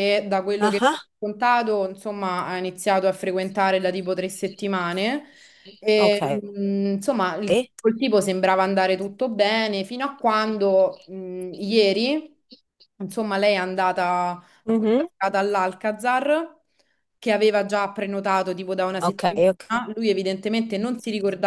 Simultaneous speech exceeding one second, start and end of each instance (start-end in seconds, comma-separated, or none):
none